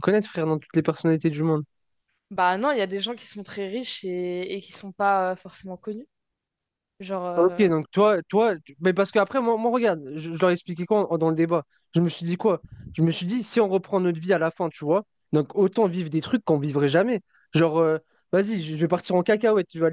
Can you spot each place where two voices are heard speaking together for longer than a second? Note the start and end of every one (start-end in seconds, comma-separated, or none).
none